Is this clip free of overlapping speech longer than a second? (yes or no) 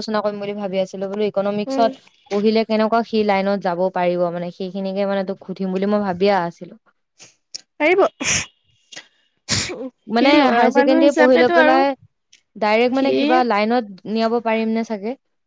no